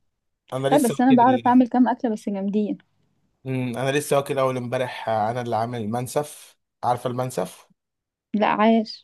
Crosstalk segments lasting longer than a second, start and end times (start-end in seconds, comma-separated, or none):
none